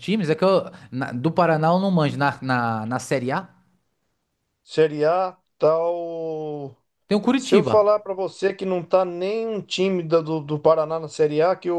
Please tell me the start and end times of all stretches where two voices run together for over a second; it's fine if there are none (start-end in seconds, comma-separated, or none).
none